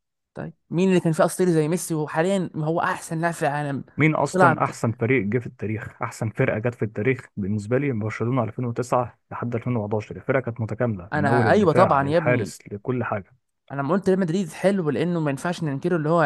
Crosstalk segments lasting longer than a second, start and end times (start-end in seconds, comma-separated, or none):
11.1-12.5